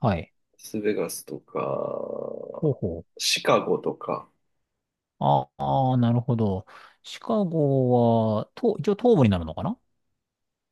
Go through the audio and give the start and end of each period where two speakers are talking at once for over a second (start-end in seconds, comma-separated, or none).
none